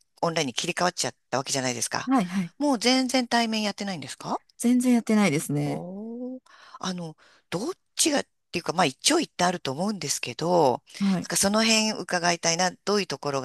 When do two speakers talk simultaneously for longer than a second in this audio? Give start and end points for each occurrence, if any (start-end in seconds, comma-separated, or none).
none